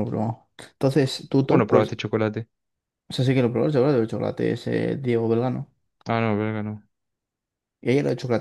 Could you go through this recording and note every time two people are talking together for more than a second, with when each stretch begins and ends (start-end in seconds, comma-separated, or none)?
none